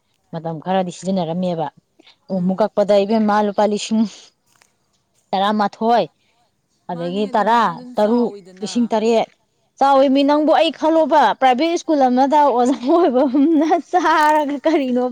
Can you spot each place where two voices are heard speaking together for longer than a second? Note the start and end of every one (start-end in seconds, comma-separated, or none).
6.9-8.9